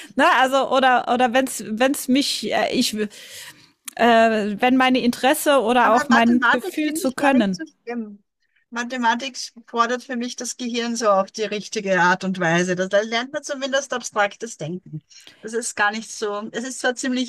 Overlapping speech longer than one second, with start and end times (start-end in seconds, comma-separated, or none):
5.8-7.6